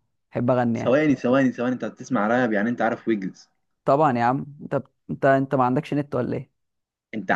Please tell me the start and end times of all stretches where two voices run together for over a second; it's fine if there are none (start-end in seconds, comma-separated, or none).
none